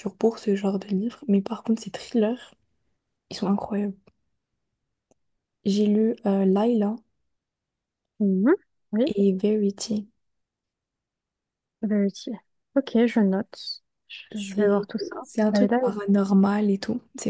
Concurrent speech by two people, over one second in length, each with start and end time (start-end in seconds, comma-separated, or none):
14.3-16.3